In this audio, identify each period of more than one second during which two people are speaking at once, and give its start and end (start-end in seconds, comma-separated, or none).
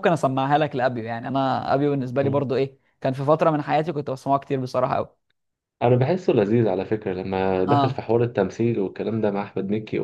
none